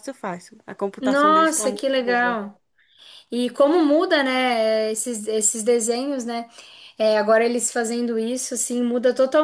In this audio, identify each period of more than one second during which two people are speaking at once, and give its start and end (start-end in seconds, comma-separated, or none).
1.0-2.4